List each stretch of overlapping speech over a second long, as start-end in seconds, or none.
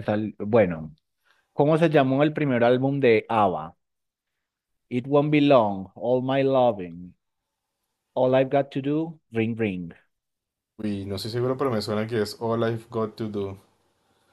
none